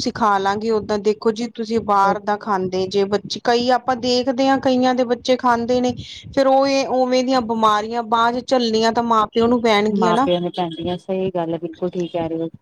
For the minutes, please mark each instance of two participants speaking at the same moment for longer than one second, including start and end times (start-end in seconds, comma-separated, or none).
none